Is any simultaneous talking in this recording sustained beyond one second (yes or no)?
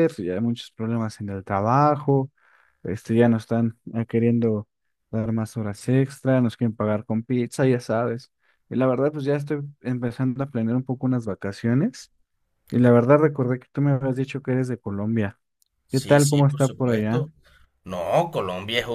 yes